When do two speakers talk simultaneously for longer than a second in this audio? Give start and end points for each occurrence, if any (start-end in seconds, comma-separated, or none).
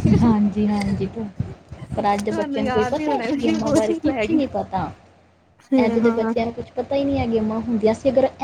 2.0-4.4